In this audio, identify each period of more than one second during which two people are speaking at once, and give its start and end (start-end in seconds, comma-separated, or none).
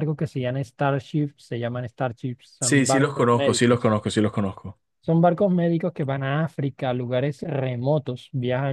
2.6-3.9